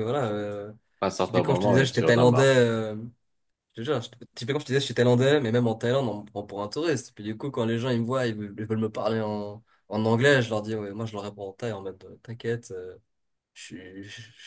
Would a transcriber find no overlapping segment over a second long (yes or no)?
no